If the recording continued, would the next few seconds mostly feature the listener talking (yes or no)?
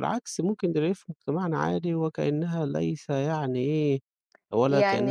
yes